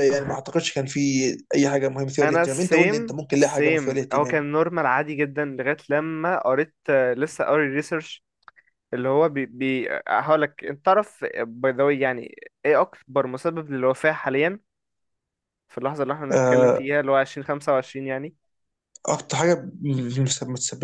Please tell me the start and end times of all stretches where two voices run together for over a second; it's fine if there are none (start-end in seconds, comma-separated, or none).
2.2-4.4